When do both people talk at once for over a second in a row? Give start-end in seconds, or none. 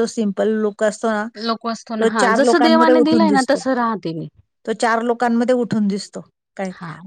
2.0-3.6